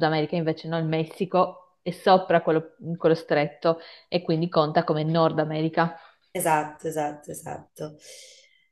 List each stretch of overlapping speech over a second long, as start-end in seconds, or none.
none